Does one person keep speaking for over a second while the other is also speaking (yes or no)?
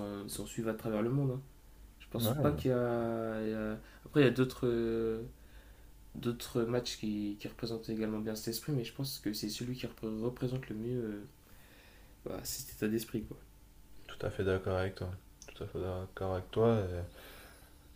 no